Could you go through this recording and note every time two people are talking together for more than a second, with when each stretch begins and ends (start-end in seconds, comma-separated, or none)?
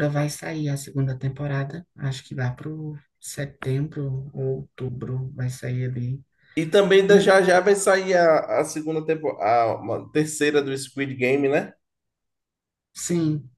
none